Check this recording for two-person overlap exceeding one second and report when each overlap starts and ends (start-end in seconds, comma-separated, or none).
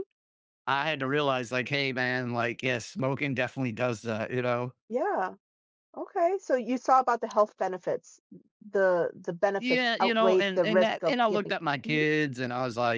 9.6-12.0